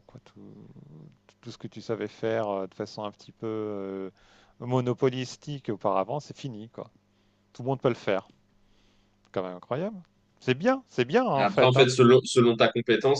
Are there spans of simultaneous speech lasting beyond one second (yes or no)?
no